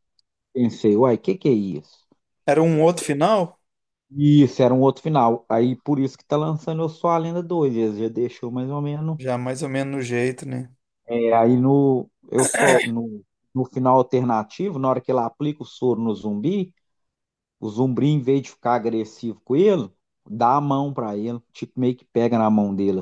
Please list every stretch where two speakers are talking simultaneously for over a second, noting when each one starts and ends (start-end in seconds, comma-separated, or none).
none